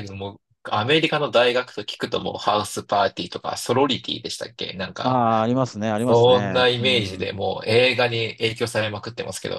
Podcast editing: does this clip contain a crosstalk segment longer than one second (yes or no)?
yes